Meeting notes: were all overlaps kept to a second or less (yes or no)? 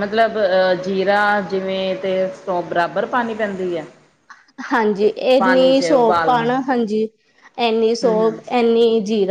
yes